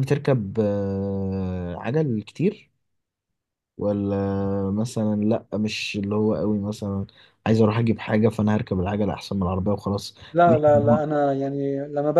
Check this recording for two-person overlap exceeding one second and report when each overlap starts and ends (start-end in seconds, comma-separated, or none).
none